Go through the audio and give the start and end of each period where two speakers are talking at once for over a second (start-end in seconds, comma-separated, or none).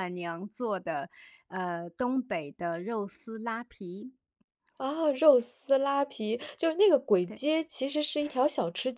none